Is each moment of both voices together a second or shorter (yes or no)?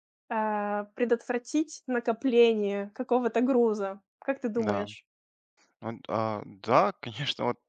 yes